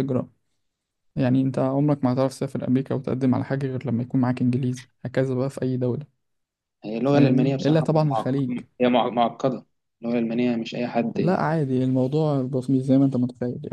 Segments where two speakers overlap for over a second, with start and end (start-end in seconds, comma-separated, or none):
7.0-8.3